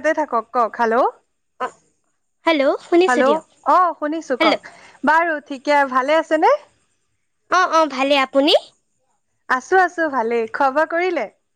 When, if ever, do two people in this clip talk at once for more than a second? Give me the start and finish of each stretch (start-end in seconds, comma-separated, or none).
none